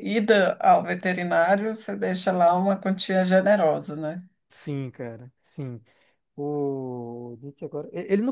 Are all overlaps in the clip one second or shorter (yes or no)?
yes